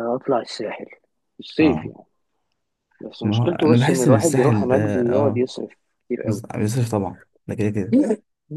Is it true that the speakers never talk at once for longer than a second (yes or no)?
no